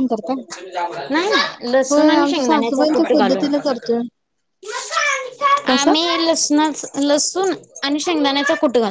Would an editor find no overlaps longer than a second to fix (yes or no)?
no